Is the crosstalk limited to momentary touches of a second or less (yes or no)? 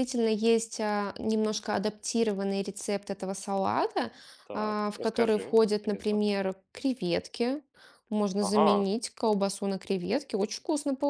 no